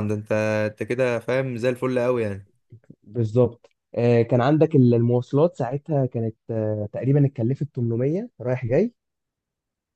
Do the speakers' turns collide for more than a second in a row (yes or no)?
no